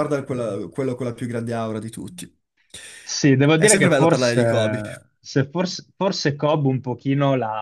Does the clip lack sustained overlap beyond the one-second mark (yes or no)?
no